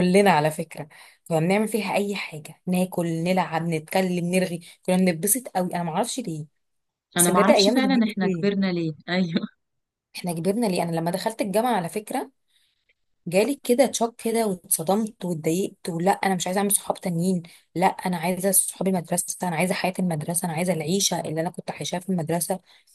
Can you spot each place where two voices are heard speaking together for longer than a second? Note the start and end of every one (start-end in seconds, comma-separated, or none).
7.2-8.5